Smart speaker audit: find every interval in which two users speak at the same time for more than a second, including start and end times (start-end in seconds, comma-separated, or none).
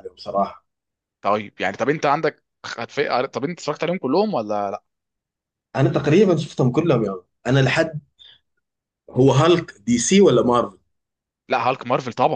none